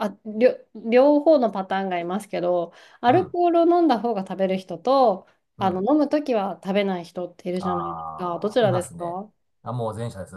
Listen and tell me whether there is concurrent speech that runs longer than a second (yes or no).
yes